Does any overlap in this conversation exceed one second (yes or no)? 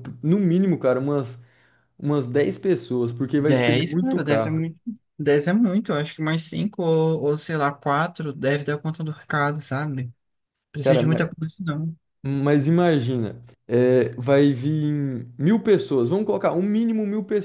yes